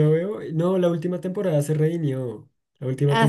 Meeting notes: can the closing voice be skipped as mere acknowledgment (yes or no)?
yes